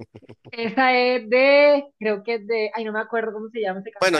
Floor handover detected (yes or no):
yes